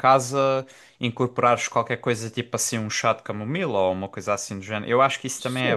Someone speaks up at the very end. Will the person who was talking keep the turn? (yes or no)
no